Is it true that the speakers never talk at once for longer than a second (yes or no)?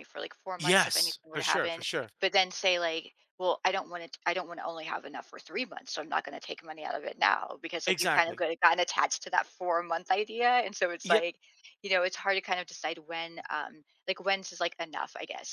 no